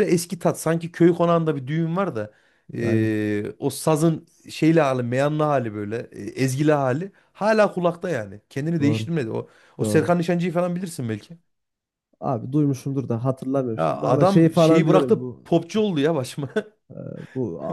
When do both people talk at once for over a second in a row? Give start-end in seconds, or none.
13.8-15.5